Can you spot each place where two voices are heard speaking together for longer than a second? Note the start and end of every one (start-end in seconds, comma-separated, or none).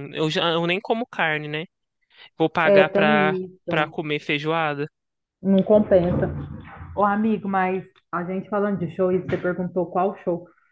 2.6-4.0